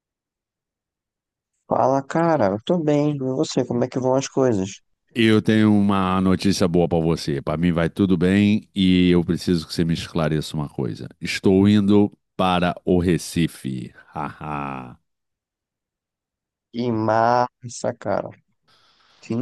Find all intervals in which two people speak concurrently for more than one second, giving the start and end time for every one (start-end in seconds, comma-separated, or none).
none